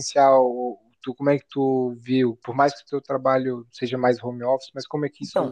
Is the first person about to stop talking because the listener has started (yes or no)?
yes